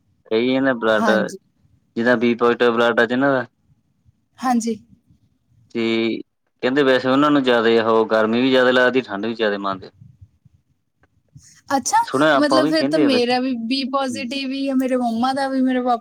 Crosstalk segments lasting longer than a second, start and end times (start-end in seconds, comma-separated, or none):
none